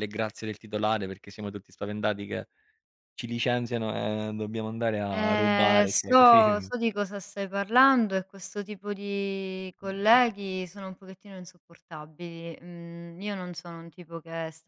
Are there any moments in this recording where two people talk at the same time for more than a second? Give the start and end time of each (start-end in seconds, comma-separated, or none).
5.1-6.7